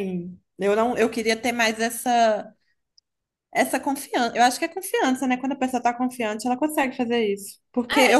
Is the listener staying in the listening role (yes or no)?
yes